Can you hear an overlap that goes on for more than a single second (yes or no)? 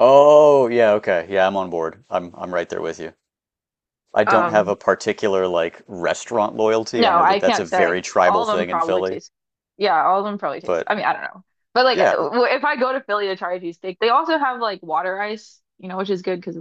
yes